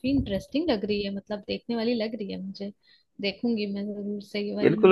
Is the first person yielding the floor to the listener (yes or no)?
yes